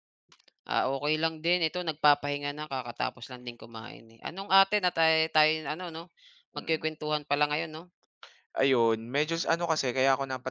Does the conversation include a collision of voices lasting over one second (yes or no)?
no